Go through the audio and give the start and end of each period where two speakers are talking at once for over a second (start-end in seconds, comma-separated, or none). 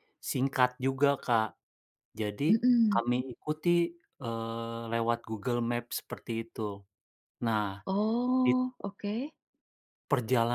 none